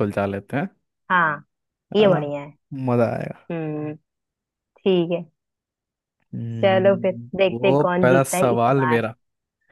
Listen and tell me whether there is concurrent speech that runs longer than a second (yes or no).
yes